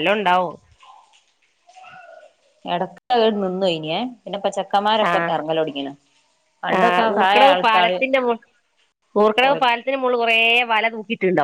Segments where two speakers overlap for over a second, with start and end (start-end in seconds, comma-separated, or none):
none